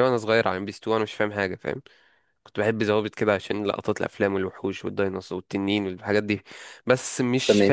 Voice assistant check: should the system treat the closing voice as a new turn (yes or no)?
no